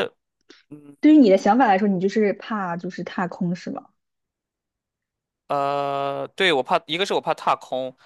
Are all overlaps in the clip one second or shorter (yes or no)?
yes